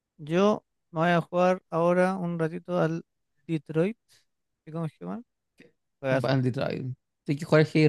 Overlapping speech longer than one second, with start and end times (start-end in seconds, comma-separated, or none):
none